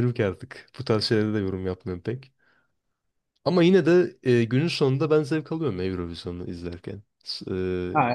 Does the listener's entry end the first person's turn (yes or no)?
no